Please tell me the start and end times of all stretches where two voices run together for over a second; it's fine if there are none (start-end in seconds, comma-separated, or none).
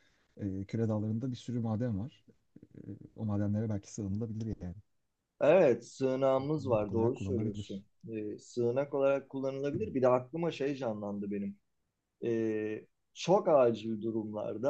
6.6-7.8